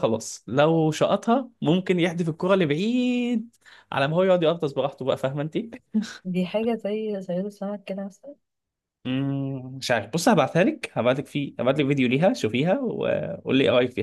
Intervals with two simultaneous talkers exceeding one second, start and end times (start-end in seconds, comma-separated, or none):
none